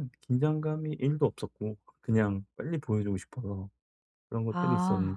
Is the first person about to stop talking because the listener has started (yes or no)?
no